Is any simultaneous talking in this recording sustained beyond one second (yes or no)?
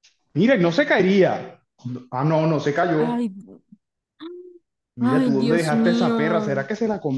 yes